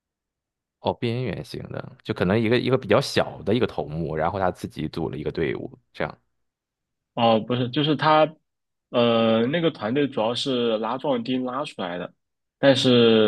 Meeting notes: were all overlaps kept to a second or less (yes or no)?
yes